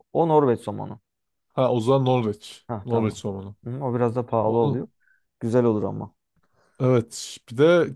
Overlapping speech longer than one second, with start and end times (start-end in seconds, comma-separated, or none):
none